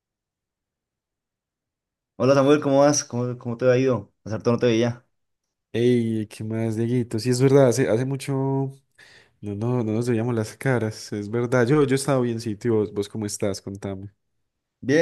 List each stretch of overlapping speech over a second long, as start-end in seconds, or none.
none